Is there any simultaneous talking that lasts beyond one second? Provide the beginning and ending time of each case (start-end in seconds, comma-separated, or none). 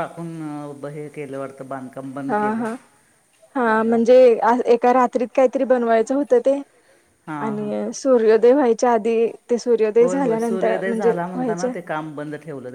10.0-11.7